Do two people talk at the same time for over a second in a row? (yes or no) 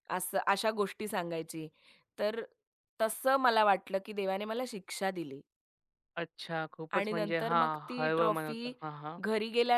yes